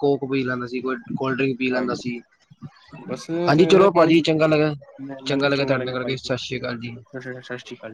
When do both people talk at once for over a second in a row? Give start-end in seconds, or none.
none